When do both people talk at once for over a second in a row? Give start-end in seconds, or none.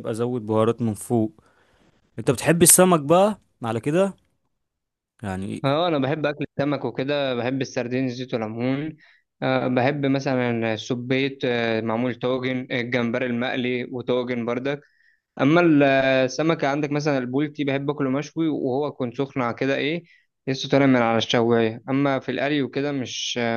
none